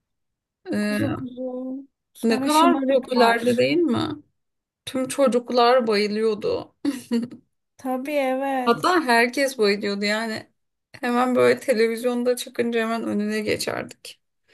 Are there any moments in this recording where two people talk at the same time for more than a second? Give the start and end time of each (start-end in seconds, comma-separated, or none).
2.2-3.6